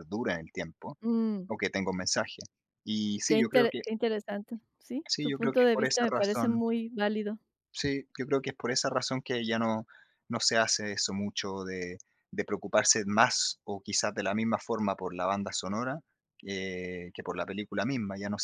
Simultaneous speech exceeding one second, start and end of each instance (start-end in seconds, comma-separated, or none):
5.1-6.6